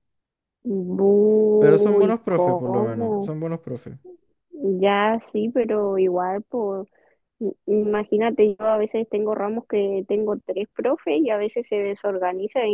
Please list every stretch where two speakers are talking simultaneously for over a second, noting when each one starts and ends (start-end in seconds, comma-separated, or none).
1.6-3.4